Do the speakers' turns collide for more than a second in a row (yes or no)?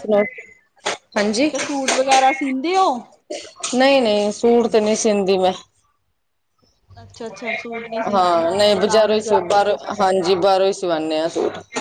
yes